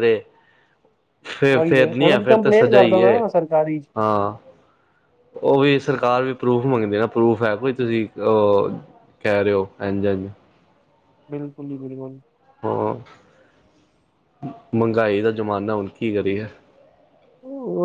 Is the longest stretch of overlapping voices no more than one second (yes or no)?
no